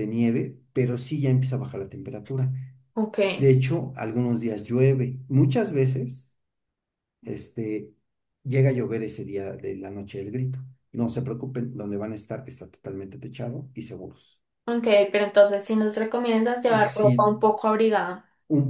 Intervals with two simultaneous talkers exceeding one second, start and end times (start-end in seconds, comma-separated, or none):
none